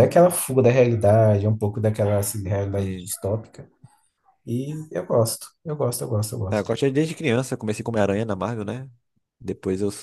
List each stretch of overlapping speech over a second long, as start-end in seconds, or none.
none